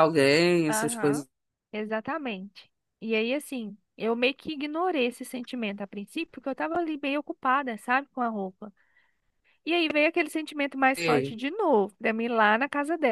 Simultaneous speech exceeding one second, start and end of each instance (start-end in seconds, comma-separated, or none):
none